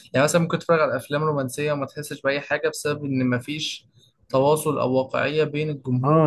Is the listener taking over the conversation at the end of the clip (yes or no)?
yes